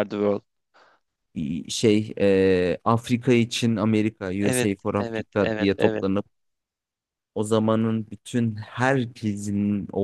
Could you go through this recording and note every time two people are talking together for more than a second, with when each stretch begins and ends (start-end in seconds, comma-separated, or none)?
4.4-6.0